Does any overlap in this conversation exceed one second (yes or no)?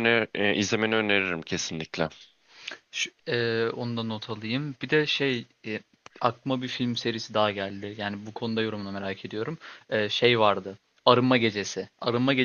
no